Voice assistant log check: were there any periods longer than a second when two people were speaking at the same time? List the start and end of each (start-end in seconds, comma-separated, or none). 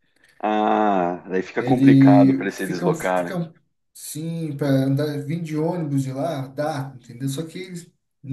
1.6-3.4